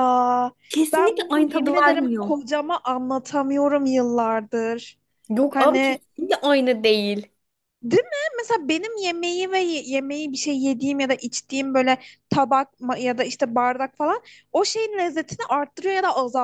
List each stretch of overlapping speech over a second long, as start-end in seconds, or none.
0.9-2.3